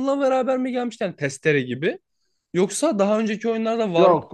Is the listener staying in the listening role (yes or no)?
no